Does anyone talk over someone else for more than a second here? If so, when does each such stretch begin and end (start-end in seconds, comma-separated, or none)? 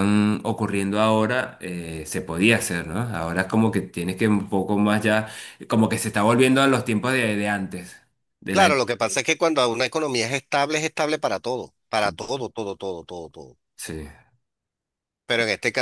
none